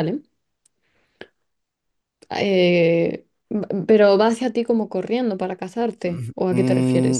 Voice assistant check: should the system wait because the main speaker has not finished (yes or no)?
no